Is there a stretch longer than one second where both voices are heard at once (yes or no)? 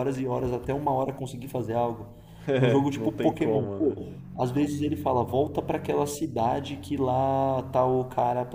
yes